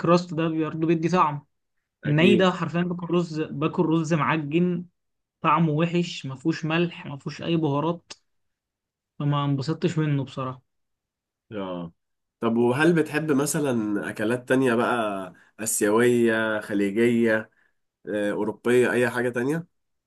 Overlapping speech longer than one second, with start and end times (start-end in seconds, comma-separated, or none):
none